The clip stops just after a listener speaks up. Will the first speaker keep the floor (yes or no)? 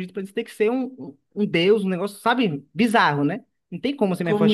no